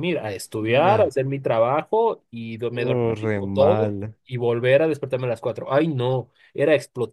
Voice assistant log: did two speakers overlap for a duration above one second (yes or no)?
yes